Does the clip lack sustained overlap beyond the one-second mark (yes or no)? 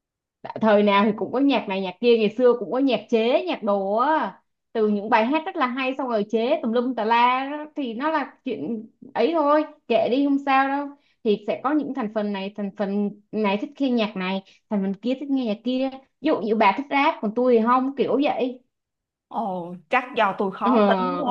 yes